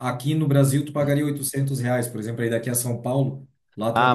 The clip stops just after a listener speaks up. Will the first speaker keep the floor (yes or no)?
no